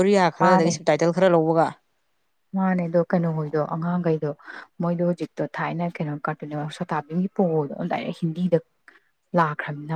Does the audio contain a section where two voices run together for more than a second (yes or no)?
no